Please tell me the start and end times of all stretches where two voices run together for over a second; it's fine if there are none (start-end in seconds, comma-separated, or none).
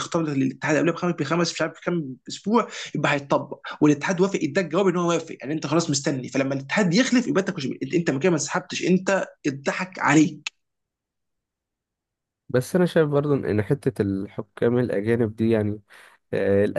none